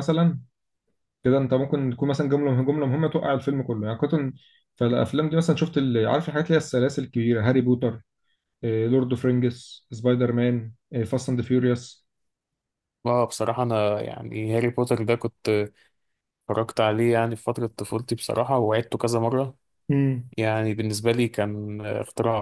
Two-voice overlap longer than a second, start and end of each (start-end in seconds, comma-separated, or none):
none